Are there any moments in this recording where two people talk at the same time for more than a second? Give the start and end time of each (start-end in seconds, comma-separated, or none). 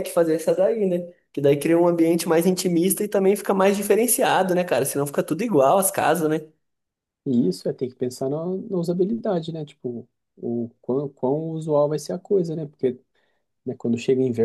none